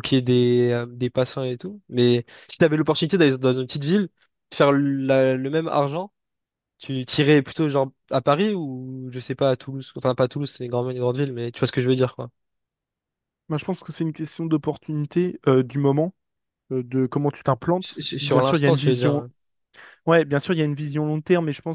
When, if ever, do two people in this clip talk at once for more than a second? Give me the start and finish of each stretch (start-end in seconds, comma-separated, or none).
17.8-19.2